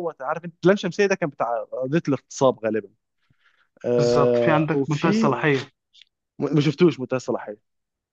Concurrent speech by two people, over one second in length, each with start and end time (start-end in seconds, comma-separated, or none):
4.0-5.3